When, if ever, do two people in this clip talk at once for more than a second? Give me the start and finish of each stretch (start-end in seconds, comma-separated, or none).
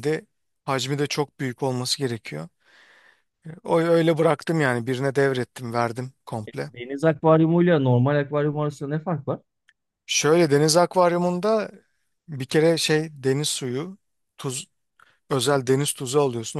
none